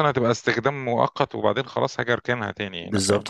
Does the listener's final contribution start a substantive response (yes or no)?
yes